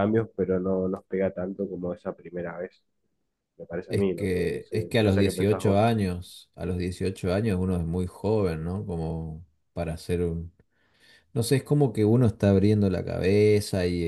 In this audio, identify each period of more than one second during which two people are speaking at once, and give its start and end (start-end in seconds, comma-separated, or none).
3.9-5.9